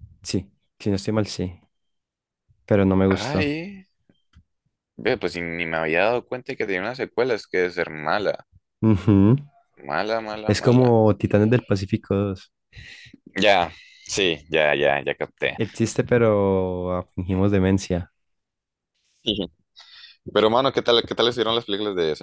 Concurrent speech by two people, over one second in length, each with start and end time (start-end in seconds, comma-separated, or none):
none